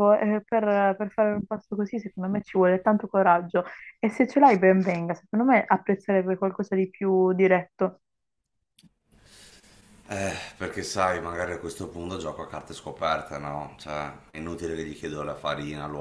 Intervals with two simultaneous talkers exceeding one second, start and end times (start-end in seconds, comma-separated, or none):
none